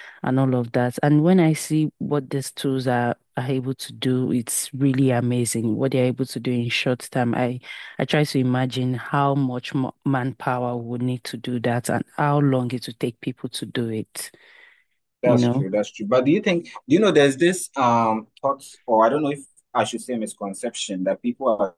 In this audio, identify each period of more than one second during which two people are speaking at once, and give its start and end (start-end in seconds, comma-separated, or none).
none